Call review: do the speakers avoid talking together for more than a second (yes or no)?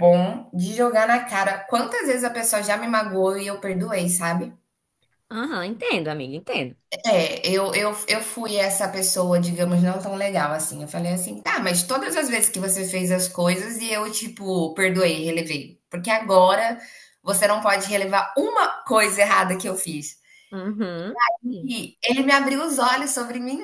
yes